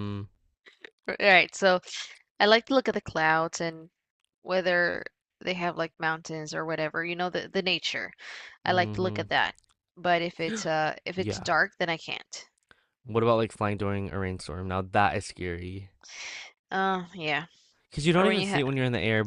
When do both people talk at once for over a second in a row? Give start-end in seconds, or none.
none